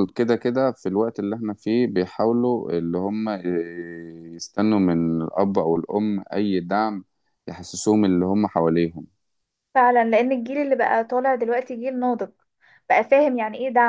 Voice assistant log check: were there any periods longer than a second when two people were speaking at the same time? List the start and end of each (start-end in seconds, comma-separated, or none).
none